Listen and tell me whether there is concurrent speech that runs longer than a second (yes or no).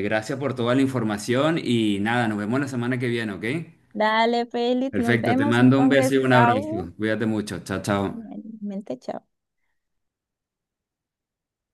yes